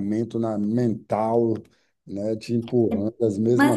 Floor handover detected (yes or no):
yes